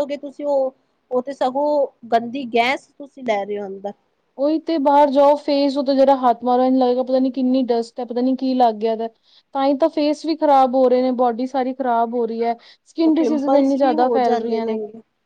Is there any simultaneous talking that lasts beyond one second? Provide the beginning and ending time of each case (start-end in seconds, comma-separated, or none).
13.0-14.6